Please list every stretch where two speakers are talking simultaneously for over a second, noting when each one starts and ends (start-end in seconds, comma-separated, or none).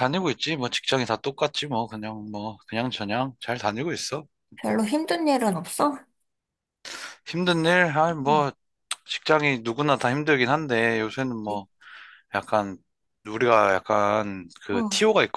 none